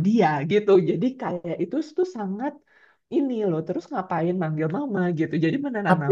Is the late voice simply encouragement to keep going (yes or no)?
no